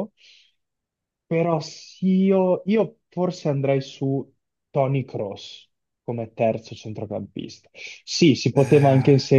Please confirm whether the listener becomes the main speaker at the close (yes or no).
no